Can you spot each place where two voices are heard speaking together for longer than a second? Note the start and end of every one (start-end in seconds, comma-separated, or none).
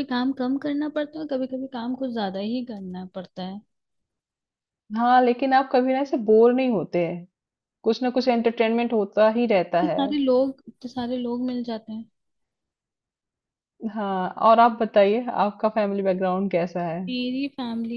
none